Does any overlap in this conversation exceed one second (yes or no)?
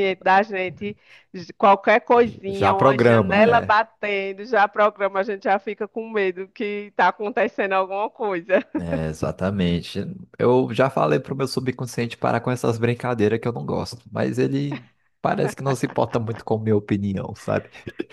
yes